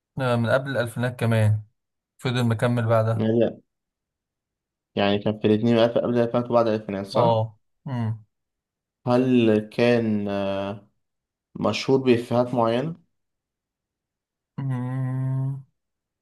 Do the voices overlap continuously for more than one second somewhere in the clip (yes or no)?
no